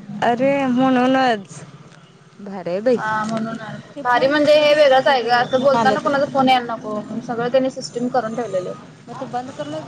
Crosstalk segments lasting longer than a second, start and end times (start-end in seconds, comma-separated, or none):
4.0-6.2